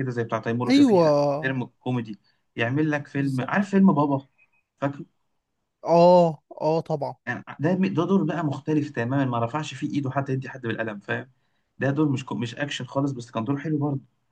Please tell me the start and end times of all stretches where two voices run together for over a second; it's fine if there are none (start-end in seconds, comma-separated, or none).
none